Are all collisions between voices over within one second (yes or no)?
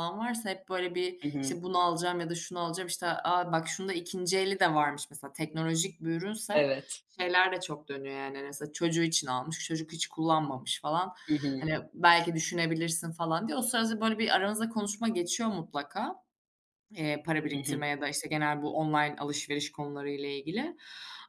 yes